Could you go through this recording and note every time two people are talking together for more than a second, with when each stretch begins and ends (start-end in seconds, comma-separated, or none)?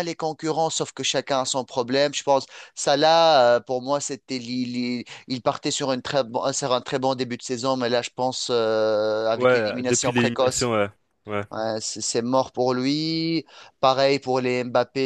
9.3-10.7